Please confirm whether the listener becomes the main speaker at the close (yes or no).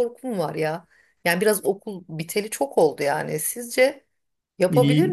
yes